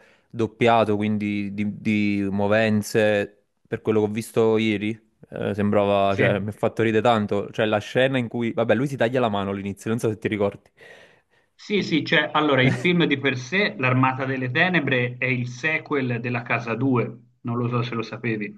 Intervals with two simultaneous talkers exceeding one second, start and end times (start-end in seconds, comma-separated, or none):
none